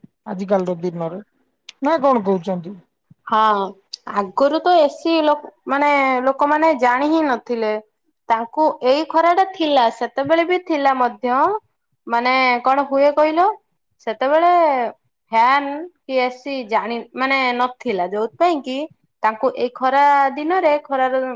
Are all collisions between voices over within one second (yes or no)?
yes